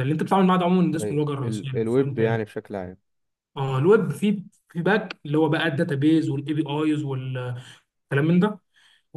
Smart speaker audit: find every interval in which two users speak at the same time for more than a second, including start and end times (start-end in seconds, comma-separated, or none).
1.0-2.5